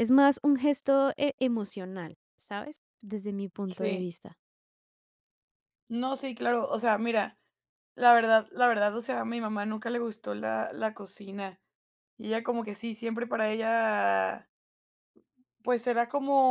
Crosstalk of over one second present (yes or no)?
no